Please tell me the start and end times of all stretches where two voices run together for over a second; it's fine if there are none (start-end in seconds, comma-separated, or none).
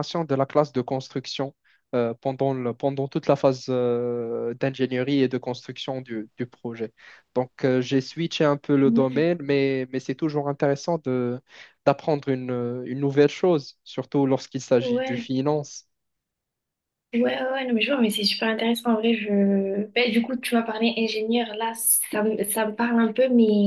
none